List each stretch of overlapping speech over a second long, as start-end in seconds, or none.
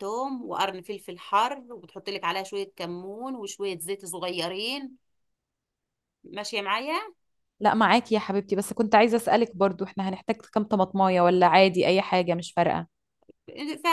none